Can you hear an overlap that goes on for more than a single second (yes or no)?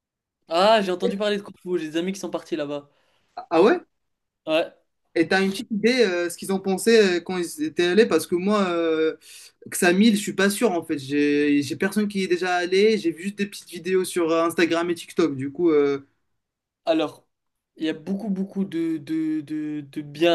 no